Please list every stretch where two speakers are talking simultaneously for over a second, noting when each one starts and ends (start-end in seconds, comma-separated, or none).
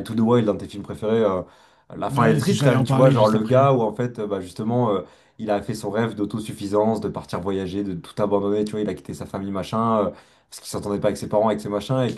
2.1-3.6